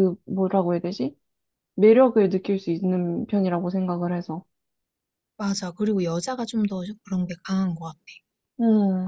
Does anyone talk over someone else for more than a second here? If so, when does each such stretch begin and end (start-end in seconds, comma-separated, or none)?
none